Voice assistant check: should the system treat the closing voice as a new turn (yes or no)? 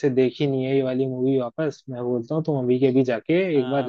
yes